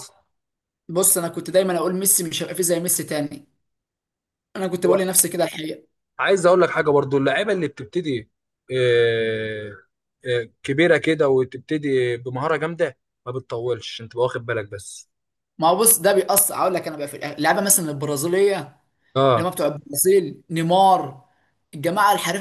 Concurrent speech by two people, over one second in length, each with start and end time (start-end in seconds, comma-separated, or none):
none